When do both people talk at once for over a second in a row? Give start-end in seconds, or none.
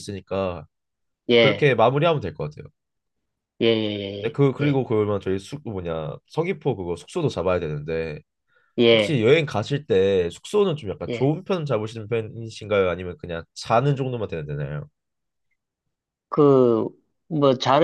none